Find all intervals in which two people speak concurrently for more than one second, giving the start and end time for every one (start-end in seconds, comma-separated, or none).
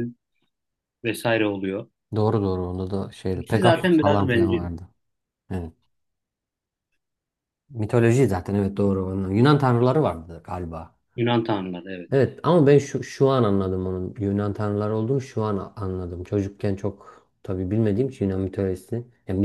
3.3-4.7